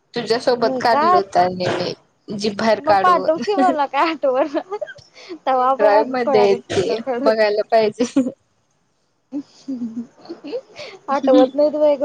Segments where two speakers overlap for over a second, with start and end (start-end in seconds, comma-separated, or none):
5.5-7.4